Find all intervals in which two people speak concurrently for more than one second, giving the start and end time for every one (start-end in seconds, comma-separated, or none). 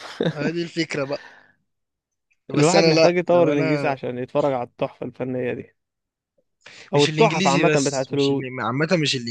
2.5-4.0, 7.0-8.5